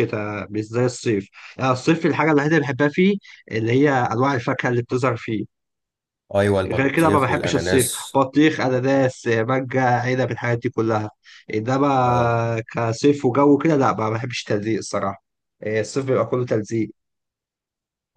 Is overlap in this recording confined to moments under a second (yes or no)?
no